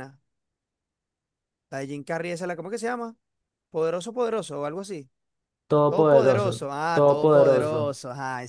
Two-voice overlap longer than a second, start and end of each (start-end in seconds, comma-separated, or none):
5.9-8.0